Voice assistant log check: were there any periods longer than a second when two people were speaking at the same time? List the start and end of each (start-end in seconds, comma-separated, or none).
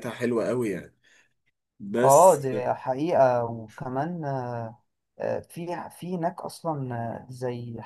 none